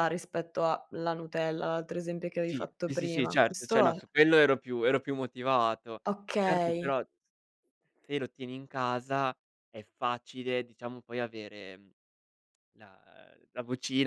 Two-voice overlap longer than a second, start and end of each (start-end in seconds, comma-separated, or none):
2.5-4.0